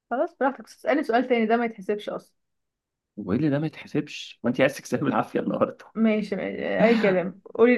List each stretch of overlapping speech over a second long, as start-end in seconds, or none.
none